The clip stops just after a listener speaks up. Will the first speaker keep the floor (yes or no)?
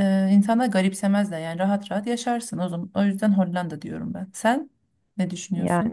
no